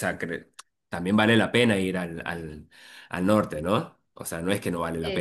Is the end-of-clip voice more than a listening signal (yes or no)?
yes